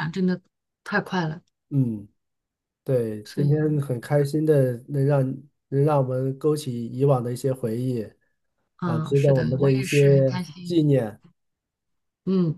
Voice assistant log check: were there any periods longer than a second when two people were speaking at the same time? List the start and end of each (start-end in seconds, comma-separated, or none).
8.8-10.9